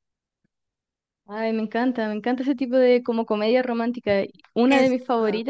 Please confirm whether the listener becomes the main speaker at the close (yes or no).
no